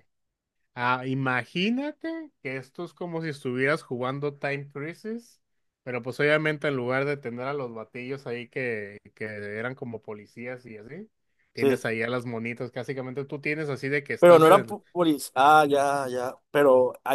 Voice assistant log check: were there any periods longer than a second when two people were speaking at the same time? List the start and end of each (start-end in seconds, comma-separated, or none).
none